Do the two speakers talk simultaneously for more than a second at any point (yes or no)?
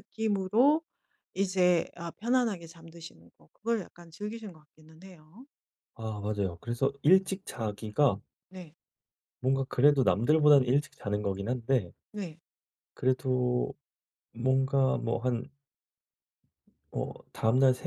no